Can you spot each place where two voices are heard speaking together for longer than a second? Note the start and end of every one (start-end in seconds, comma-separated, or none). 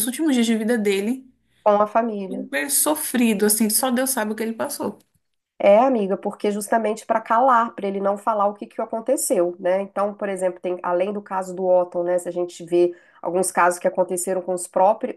none